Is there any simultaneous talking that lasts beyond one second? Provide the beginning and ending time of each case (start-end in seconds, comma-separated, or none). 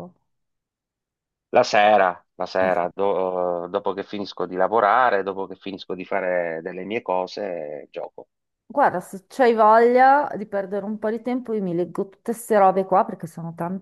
none